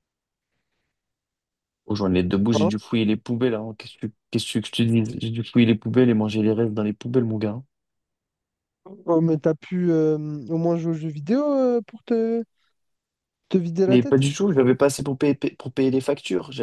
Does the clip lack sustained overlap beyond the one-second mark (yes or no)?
yes